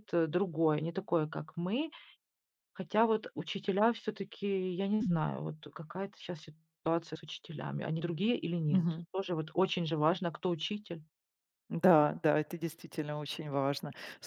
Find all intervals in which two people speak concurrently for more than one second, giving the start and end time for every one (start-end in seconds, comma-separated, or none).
none